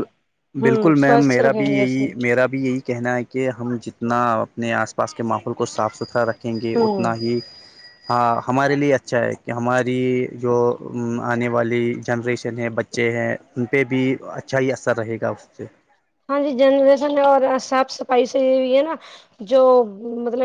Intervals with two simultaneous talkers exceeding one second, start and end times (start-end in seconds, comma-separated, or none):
0.6-2.1